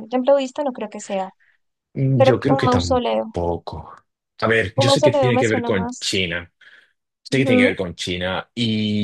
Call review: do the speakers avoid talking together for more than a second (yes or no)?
no